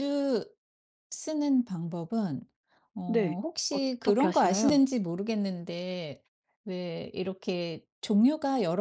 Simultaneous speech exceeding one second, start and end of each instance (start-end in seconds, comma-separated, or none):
3.1-4.8